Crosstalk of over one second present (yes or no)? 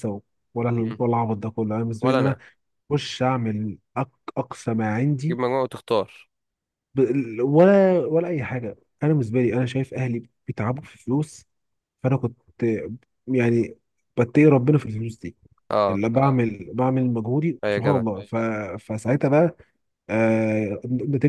no